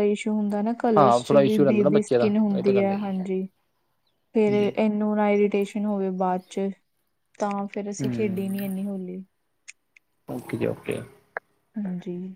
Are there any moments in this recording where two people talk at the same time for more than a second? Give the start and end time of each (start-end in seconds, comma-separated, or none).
0.8-3.2